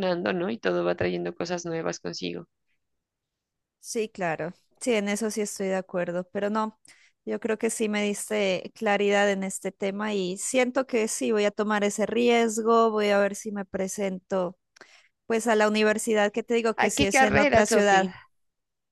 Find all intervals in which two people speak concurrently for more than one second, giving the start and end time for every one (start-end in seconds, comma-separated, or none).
16.8-18.1